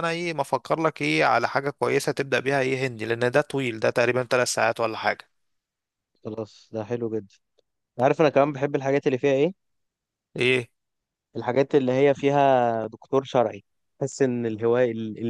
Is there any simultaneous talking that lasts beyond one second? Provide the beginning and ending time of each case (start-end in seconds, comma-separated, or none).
none